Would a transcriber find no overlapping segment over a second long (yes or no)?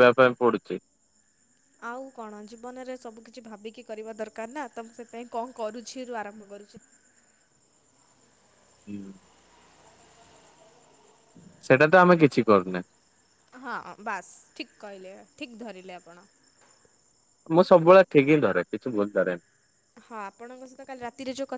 yes